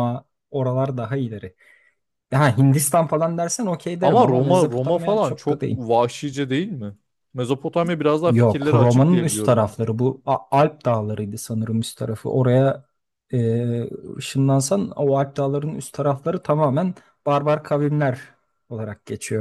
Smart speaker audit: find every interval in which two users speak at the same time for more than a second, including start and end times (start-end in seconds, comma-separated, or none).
4.0-5.8, 8.2-9.8